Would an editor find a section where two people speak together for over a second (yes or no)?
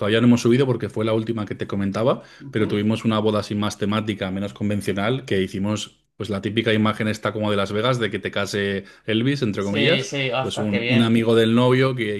yes